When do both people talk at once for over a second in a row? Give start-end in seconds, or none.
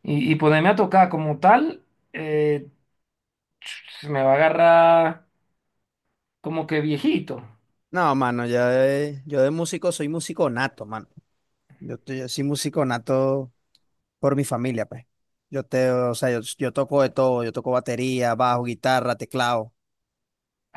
none